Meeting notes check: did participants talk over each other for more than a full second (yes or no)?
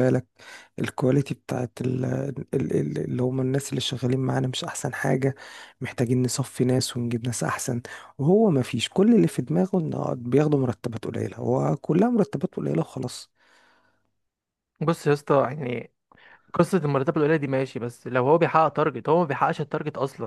no